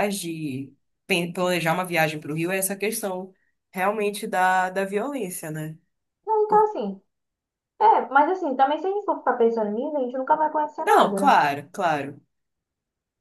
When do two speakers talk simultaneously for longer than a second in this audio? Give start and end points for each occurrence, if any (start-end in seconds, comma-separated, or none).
none